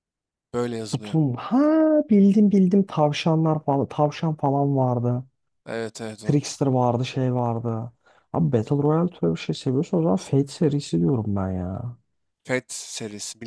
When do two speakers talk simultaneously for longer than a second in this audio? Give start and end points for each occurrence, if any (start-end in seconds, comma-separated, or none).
none